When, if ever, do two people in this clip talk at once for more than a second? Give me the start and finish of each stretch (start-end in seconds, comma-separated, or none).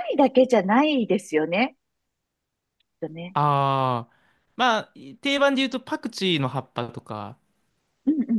none